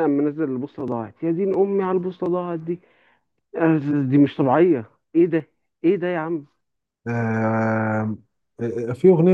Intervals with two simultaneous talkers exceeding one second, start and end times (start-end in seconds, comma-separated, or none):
none